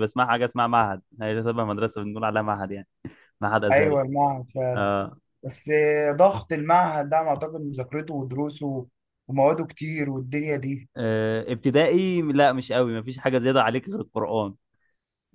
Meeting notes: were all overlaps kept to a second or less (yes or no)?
yes